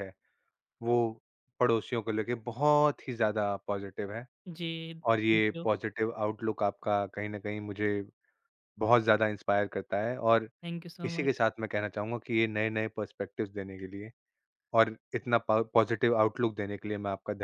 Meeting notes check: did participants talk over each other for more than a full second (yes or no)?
no